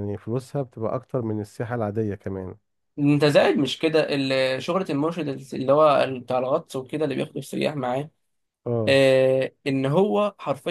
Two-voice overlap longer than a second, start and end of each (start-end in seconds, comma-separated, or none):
none